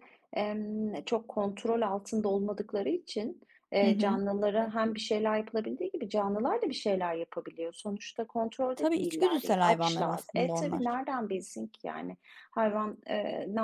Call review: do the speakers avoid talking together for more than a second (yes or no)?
no